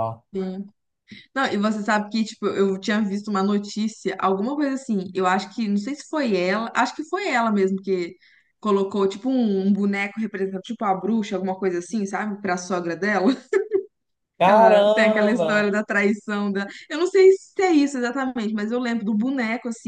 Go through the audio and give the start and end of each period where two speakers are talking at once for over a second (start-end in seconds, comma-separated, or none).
14.4-15.7